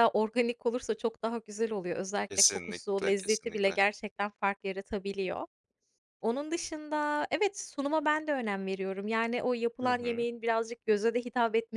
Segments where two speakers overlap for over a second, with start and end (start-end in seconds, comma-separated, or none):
2.3-3.8